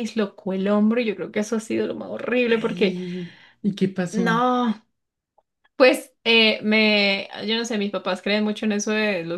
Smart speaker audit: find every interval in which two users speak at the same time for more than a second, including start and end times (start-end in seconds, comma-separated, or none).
none